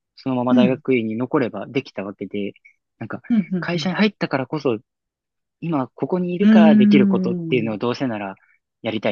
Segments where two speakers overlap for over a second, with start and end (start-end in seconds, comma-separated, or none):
6.5-7.8